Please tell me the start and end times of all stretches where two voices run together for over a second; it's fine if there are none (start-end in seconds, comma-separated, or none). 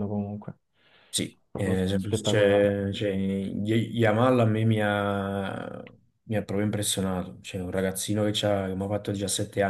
1.5-2.8